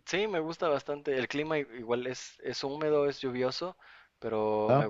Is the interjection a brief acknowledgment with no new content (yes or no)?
yes